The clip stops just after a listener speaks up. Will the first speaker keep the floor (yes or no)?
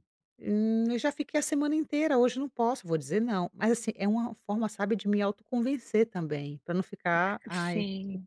yes